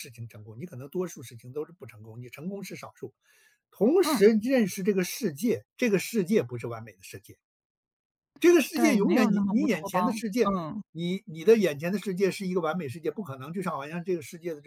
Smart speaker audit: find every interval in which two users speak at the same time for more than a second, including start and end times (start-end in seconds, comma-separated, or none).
8.7-10.5